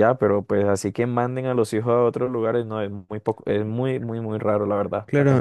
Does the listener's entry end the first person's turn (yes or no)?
yes